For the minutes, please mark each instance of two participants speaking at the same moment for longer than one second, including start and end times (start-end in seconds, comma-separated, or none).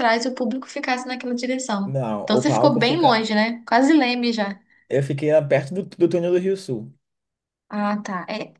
1.9-3.2